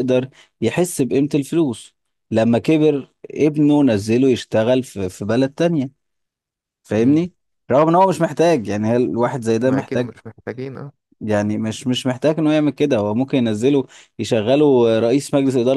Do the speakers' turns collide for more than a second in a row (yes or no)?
no